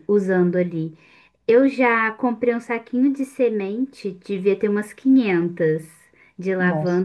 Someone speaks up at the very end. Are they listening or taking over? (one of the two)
listening